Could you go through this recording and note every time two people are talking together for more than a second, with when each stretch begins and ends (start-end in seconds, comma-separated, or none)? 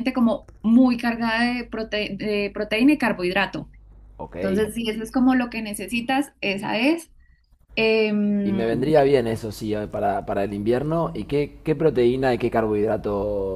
none